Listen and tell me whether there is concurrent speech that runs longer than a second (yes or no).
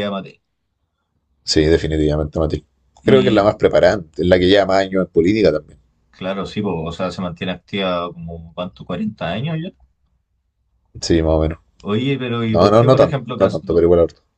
yes